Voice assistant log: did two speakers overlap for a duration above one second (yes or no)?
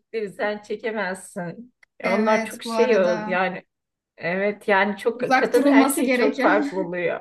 yes